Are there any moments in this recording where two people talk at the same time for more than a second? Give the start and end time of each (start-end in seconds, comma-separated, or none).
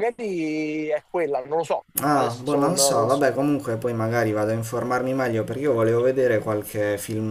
2.0-3.3